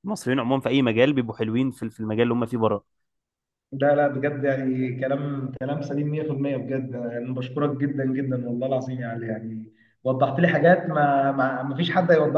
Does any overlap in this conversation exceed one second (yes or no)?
no